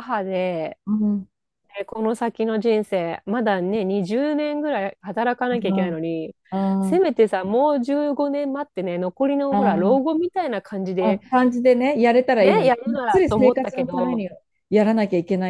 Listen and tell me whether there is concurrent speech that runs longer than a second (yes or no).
yes